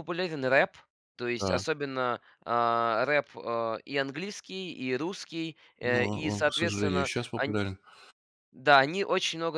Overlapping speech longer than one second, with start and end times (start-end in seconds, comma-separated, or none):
5.8-7.6